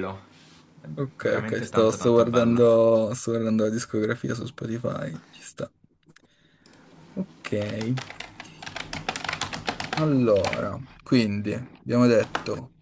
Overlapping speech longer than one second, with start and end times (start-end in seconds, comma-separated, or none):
1.2-2.6